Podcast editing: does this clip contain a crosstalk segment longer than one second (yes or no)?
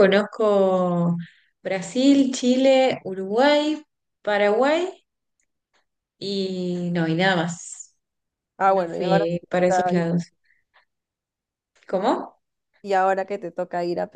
yes